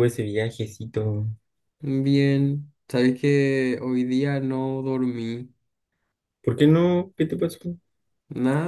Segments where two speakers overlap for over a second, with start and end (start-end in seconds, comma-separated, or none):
none